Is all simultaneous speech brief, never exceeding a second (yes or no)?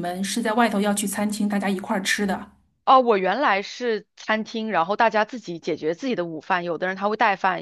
yes